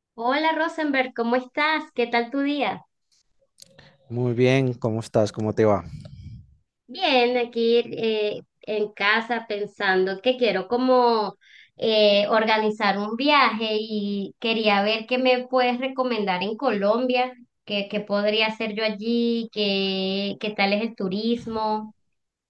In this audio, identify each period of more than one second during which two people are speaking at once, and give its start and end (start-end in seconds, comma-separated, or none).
none